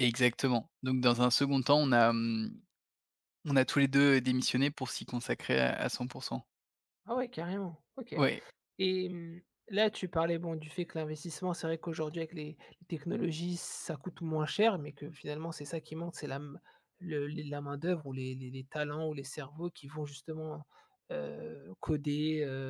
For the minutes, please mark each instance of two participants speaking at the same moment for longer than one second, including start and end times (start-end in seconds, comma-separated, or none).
none